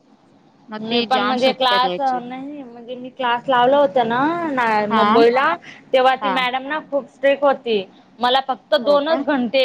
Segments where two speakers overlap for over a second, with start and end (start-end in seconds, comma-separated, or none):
0.8-2.2